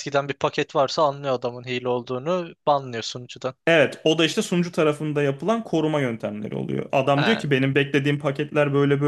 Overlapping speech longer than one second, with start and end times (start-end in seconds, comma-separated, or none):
none